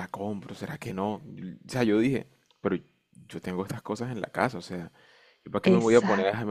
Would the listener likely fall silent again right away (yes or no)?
yes